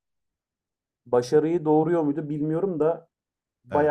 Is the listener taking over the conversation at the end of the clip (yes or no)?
no